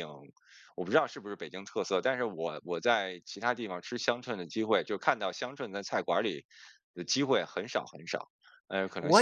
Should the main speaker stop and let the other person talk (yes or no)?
yes